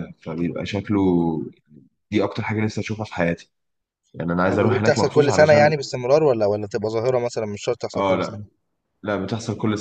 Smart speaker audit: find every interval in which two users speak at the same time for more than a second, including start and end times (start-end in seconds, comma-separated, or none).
4.5-5.7